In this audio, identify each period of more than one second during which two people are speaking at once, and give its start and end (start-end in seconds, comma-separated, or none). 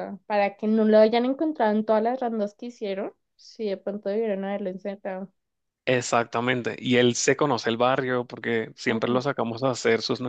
none